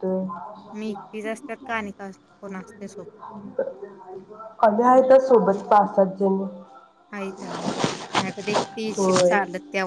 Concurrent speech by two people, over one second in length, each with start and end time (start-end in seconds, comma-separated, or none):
none